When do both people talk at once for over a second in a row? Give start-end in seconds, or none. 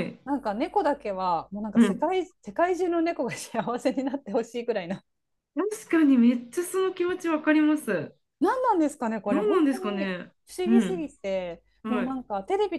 9.2-11.1